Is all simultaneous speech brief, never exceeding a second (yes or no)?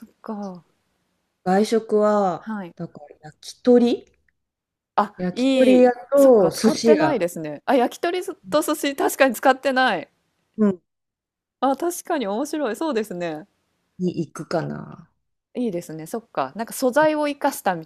no